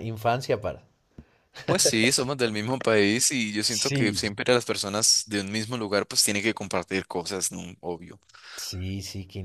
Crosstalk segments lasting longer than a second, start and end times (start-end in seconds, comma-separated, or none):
none